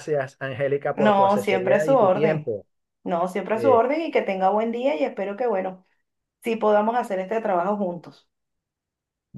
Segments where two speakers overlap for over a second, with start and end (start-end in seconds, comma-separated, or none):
0.9-2.5